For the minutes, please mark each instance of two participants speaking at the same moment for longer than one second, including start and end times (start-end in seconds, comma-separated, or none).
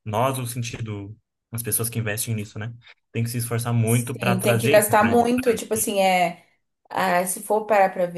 3.8-5.2